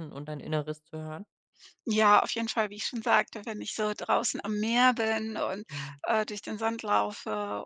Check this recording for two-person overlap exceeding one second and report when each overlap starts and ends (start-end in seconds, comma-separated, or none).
none